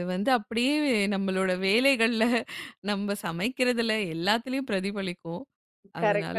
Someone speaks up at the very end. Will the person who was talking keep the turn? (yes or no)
no